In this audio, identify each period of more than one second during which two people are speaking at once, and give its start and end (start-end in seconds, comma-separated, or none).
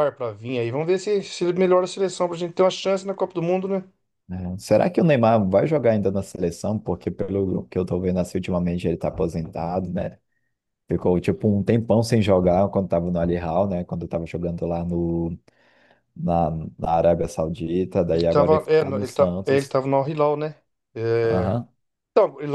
18.1-19.8